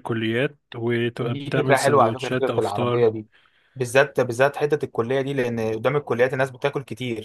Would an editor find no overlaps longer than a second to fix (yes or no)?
no